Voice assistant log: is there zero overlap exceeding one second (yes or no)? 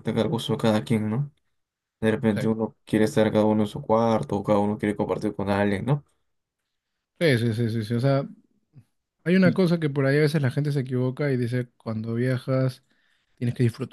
yes